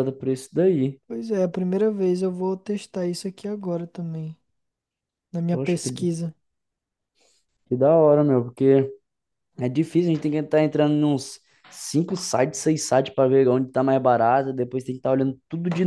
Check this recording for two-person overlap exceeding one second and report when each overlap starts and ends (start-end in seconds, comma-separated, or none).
none